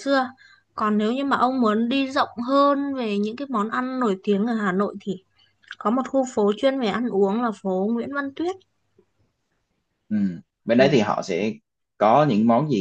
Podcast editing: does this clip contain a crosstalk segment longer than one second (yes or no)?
no